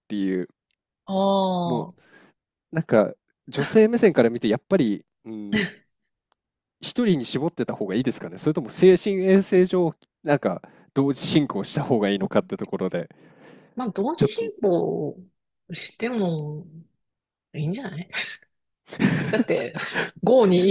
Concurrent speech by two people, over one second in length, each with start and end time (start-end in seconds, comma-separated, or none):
none